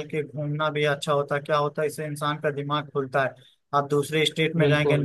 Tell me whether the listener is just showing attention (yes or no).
yes